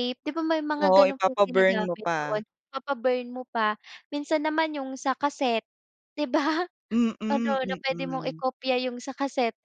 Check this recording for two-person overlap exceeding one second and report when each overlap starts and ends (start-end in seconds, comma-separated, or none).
0.8-2.4